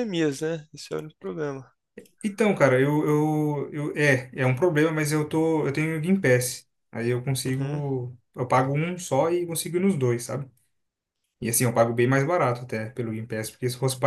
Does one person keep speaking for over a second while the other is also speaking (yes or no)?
no